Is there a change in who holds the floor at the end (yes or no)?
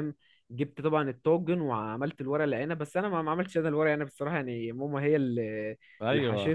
no